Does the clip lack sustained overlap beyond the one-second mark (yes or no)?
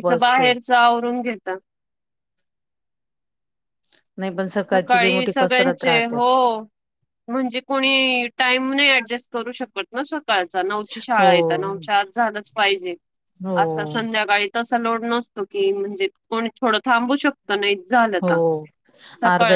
no